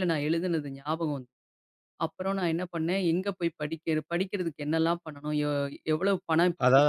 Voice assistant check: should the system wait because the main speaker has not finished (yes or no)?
no